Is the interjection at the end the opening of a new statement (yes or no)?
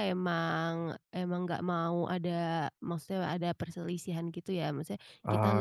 no